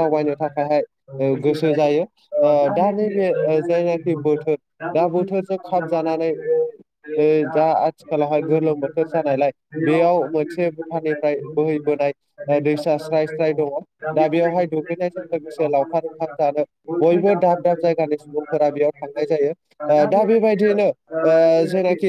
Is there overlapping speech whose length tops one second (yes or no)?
yes